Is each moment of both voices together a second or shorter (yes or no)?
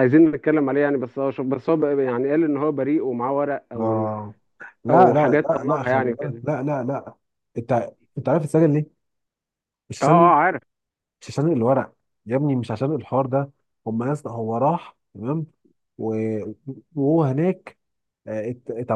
no